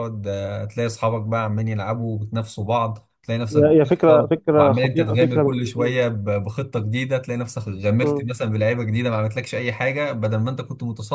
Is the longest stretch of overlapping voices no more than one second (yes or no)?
no